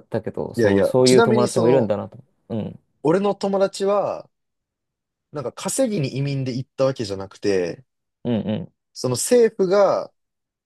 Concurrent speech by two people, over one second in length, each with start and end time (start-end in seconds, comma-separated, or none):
0.6-1.9